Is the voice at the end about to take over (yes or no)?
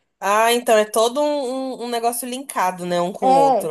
yes